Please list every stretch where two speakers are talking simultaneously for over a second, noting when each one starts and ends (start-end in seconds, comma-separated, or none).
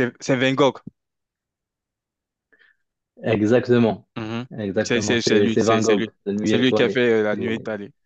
4.8-7.5